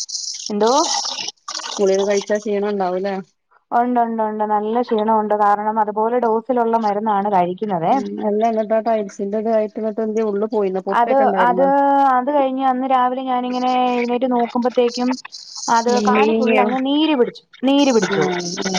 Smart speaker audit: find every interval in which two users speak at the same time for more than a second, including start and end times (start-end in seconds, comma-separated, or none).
none